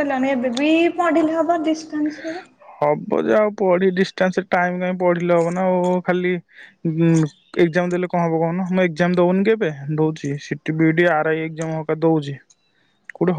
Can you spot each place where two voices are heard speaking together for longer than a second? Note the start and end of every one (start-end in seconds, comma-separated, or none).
none